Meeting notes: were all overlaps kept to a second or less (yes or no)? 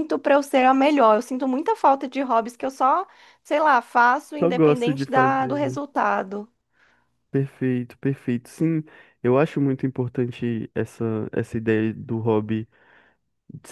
no